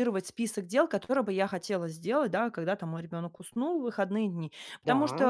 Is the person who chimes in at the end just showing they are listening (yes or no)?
yes